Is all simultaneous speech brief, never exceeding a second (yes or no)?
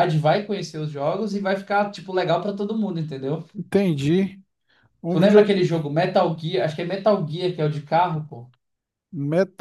yes